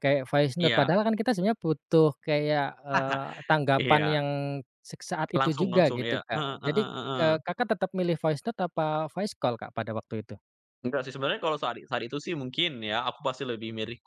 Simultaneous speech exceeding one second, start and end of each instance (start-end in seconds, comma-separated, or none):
5.4-7.3